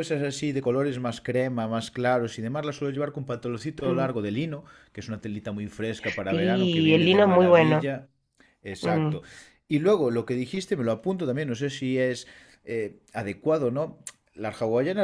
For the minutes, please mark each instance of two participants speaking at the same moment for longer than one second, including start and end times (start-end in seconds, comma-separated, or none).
6.3-7.9